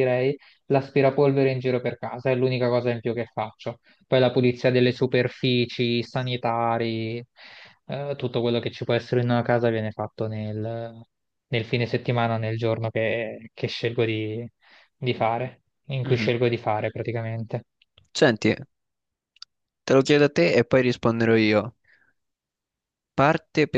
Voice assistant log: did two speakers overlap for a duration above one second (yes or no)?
no